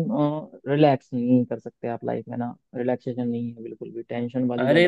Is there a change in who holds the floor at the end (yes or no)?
yes